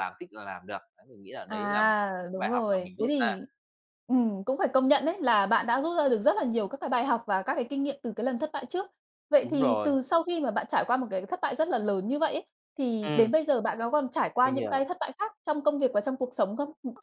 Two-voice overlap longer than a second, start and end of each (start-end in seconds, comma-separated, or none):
1.5-3.4